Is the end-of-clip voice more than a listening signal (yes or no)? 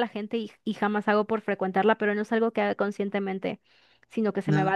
no